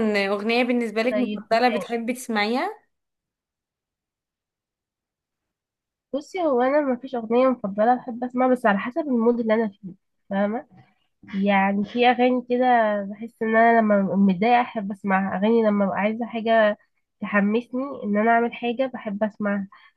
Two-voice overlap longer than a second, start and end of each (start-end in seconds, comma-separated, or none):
none